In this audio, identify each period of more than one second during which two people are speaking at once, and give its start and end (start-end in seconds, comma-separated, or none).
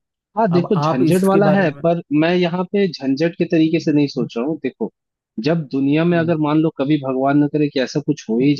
0.5-1.8